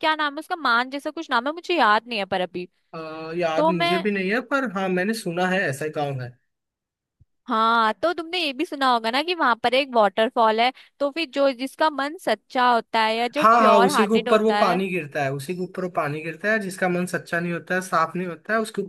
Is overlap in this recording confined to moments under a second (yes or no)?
no